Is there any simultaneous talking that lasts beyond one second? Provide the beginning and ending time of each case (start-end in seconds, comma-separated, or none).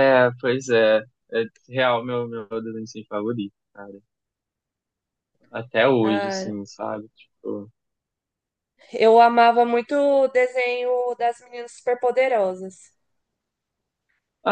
none